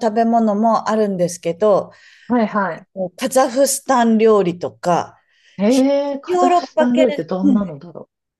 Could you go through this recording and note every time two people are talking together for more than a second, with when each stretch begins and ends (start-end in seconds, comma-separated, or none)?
6.3-7.6